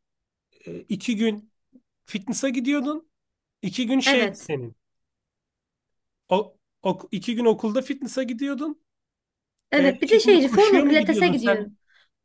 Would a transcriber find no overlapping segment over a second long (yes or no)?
no